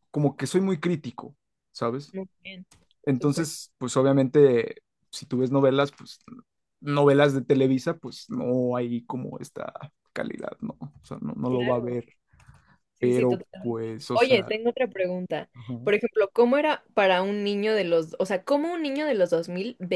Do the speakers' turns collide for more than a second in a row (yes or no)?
yes